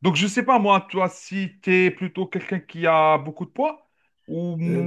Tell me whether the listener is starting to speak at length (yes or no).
yes